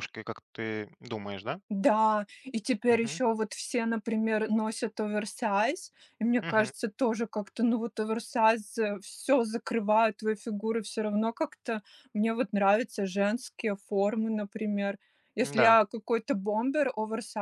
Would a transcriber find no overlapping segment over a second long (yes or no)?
yes